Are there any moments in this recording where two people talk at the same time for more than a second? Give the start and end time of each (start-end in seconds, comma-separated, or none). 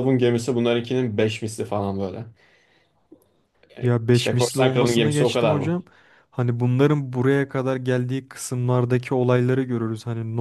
4.1-5.7